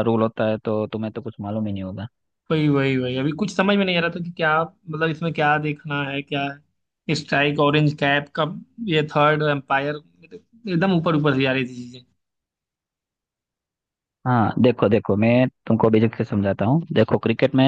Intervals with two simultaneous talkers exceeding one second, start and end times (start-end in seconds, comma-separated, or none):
none